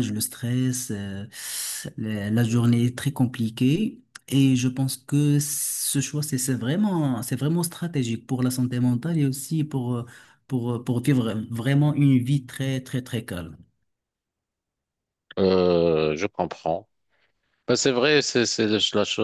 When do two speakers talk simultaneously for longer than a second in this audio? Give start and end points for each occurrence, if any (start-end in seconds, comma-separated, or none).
none